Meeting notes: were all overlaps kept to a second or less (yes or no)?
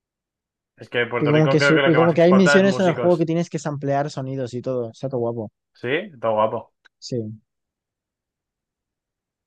no